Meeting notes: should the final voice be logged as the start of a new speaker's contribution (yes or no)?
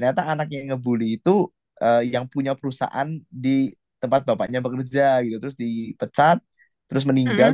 no